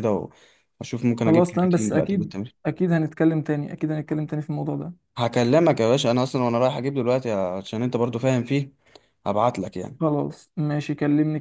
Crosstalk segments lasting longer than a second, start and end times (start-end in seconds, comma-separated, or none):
1.2-2.5